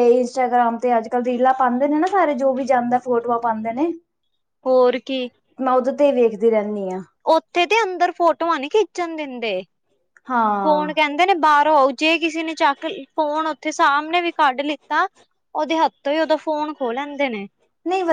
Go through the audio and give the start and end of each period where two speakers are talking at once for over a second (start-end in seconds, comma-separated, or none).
none